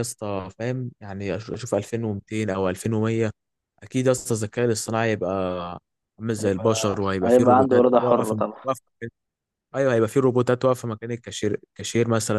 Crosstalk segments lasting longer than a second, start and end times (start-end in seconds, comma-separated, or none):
6.4-8.6